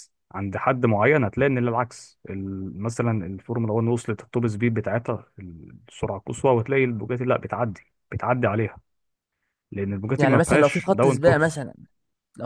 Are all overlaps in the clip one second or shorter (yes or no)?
no